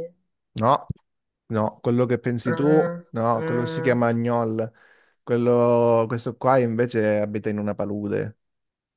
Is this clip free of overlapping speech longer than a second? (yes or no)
no